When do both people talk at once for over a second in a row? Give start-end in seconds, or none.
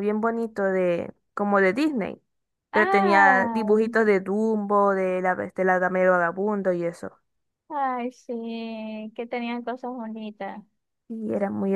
2.7-3.9